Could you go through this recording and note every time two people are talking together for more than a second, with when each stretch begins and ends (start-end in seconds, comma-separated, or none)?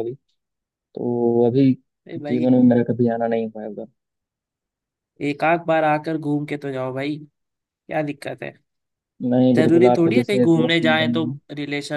9.5-11.2